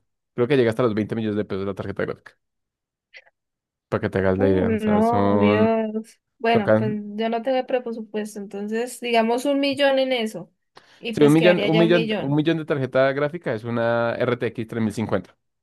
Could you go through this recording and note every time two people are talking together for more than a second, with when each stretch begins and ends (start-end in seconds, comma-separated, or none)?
4.3-5.7, 11.1-12.4